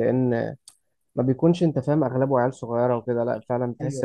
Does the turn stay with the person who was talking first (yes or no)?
no